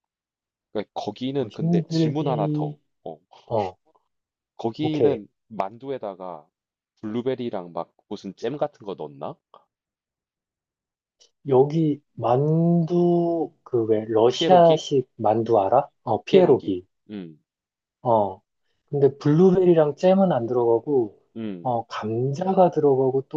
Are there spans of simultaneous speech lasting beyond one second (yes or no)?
yes